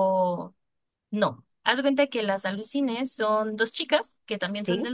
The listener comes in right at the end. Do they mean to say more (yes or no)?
no